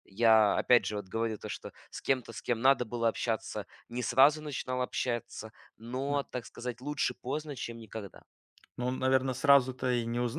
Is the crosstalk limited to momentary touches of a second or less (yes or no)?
yes